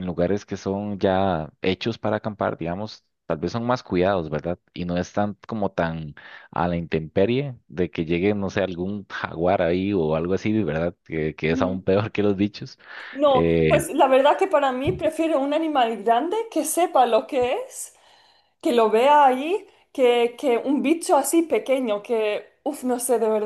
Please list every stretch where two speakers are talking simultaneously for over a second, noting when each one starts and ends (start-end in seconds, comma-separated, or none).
none